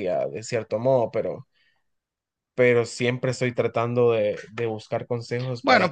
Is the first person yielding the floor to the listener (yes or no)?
yes